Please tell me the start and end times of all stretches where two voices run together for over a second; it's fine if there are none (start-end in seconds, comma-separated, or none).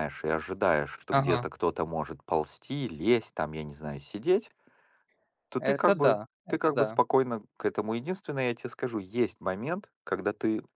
5.6-7.0